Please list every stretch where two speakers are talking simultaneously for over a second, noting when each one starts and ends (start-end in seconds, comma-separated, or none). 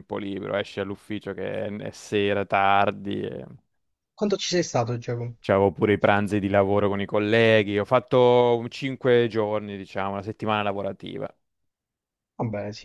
none